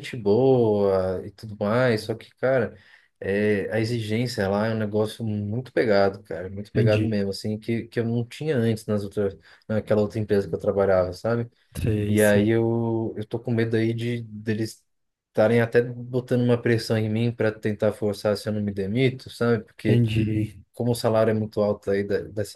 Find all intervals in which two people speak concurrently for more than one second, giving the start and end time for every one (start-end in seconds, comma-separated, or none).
none